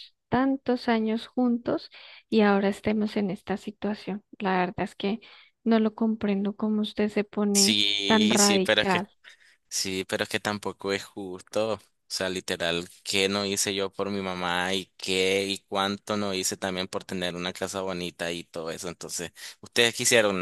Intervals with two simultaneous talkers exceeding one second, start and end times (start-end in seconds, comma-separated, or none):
7.5-9.1